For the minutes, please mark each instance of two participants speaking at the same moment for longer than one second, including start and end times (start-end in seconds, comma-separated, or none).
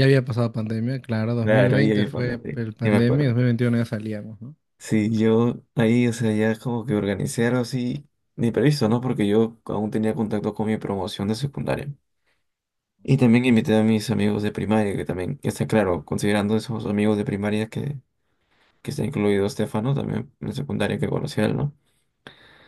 1.4-3.4